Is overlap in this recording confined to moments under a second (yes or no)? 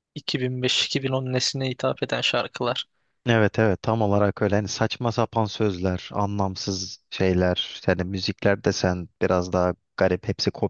yes